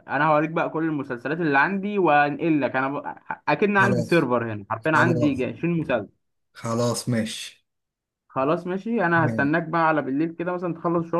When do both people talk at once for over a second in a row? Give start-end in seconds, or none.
none